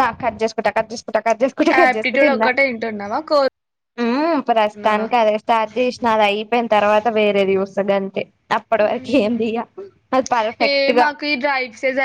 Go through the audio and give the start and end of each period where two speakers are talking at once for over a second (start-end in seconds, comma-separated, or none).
none